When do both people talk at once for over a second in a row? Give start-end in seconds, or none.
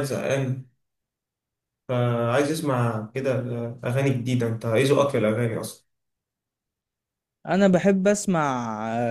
none